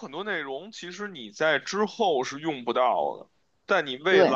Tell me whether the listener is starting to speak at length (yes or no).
no